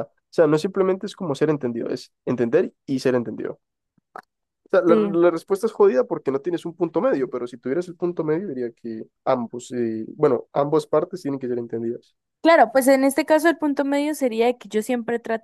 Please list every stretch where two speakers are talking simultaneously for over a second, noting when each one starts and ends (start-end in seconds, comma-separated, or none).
none